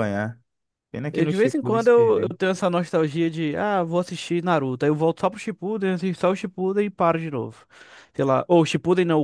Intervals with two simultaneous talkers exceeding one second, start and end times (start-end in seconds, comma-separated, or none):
1.1-2.3